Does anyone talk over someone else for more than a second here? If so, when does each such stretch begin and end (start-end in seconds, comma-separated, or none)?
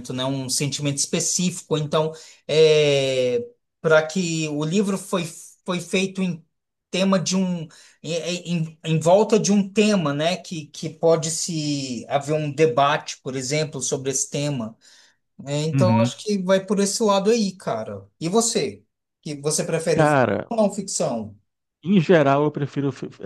none